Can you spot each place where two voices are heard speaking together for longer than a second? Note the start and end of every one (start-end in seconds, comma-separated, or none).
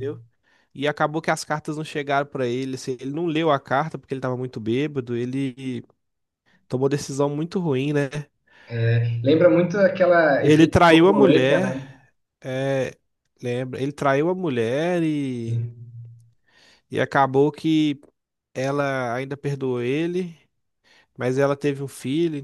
10.4-11.7